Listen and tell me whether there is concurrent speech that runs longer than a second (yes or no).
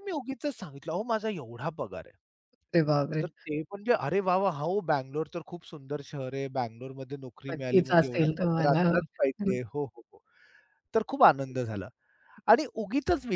yes